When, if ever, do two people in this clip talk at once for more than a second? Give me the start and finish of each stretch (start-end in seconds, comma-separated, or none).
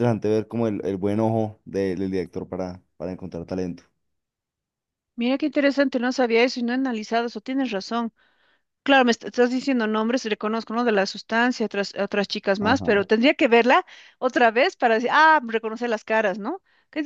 none